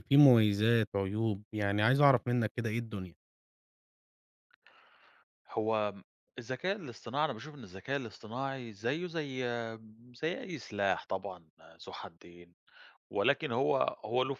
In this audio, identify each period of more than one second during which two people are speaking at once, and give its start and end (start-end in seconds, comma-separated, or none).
none